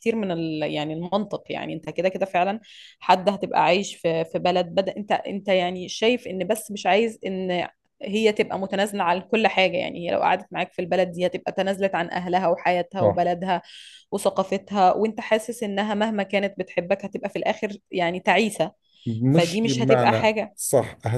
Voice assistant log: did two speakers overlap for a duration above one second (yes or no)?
yes